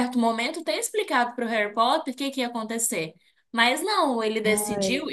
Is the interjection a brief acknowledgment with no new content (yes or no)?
yes